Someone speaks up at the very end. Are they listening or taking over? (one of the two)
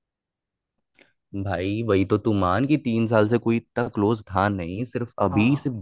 listening